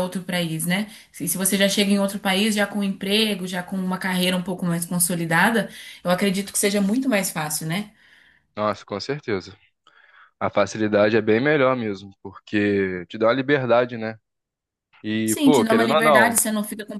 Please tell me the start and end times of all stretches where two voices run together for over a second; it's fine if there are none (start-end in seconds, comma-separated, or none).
15.2-16.4